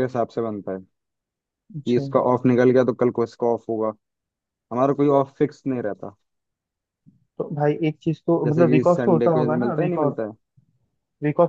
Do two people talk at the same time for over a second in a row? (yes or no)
yes